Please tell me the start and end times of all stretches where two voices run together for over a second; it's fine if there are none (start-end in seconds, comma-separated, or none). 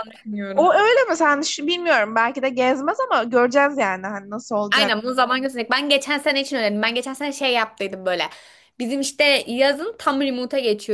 none